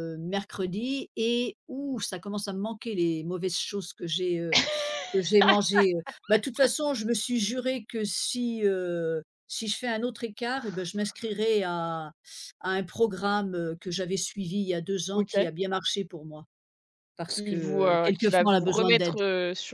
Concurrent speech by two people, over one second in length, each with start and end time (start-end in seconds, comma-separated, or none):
17.3-19.2